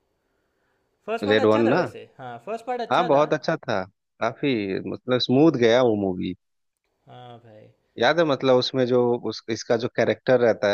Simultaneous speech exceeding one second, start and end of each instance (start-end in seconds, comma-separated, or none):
none